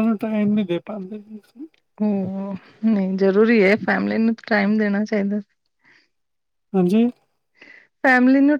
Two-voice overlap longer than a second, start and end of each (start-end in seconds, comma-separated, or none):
none